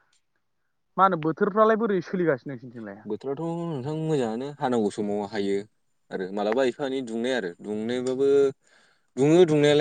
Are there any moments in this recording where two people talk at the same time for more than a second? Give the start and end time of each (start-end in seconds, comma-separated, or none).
none